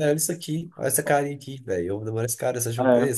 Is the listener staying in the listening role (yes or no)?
no